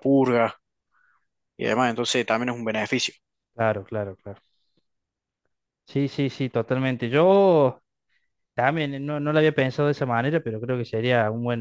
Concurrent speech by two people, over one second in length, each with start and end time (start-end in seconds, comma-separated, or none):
none